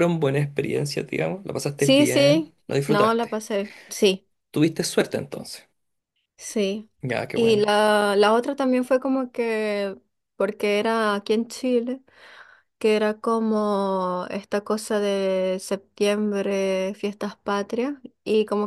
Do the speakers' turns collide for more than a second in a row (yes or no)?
yes